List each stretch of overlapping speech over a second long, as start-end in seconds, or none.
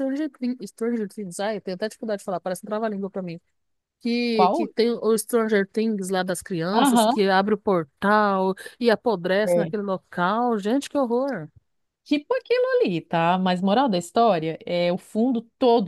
none